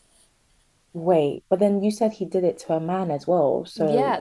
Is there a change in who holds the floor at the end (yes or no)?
yes